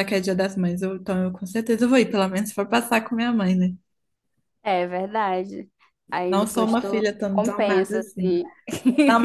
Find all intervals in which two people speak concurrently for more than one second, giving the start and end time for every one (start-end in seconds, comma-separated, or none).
6.3-8.4